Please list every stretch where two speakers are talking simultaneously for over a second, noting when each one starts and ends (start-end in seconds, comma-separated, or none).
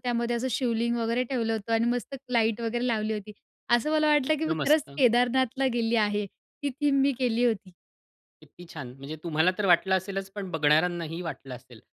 none